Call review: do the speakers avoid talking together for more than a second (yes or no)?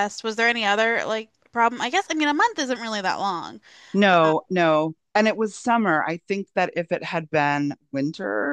yes